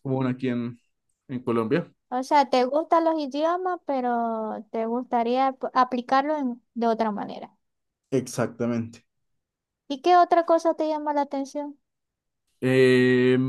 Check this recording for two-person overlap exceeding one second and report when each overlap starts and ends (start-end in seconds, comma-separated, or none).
none